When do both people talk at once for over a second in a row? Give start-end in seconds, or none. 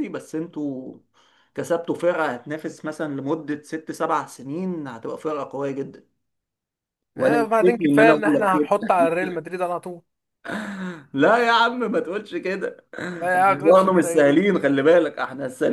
7.2-8.5, 13.2-14.5